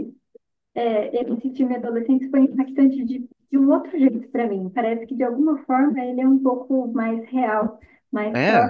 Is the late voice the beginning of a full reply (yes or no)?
no